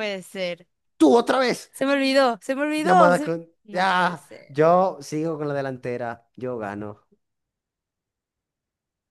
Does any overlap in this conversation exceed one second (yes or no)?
yes